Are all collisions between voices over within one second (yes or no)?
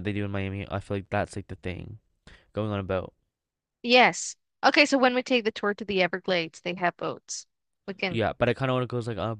yes